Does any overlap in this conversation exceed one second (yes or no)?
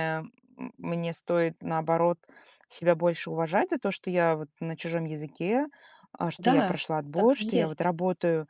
yes